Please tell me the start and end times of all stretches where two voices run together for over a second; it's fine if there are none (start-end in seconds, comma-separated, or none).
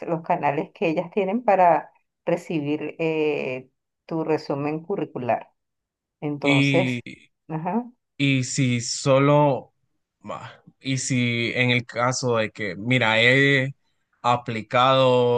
none